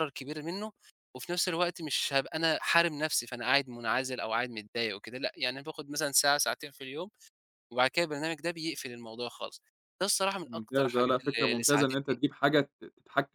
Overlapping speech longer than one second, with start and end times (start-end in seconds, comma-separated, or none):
10.4-12.2